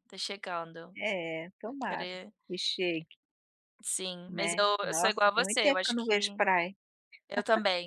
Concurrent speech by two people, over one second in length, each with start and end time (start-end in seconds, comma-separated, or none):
4.3-6.4